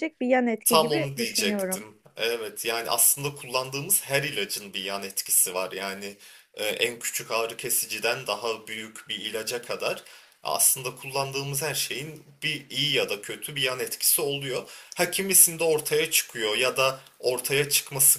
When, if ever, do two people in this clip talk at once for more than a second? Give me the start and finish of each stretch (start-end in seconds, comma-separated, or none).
0.6-1.8